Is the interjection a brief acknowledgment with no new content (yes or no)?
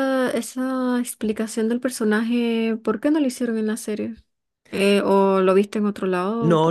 no